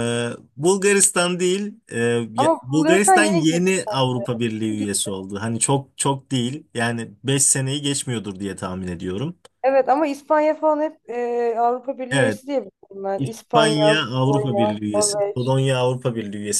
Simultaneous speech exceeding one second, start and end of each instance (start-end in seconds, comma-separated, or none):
2.4-3.7, 13.2-15.6